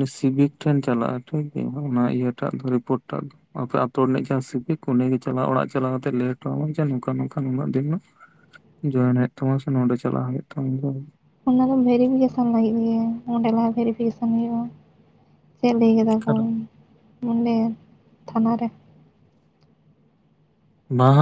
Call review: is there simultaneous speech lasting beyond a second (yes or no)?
no